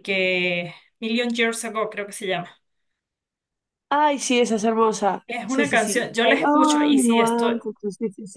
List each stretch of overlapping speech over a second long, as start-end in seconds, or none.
5.3-7.6